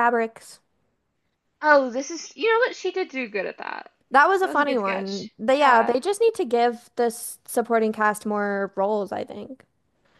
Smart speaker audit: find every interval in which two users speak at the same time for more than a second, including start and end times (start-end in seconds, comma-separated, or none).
4.4-6.0